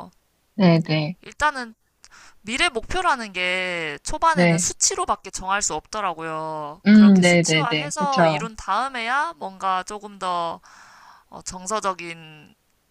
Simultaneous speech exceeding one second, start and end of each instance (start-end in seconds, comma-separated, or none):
6.9-8.4